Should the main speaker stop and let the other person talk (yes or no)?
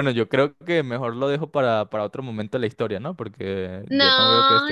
yes